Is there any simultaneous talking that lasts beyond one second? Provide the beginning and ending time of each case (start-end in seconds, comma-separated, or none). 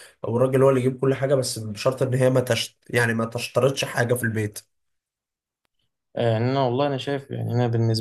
none